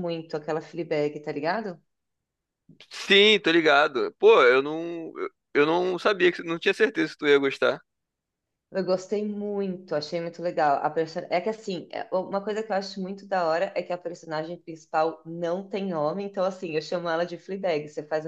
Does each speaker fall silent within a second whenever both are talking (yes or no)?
yes